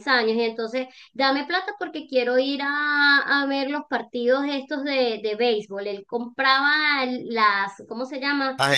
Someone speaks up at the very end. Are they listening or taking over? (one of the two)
listening